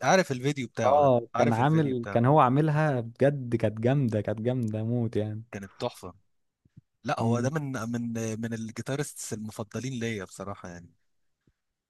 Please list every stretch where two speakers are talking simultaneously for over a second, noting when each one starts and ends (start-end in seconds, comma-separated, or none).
0.8-2.2